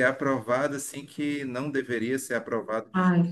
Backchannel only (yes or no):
no